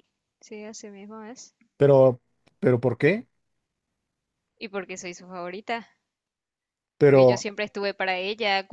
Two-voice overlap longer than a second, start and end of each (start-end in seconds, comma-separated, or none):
none